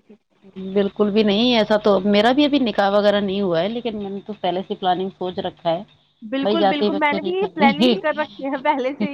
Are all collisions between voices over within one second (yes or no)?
no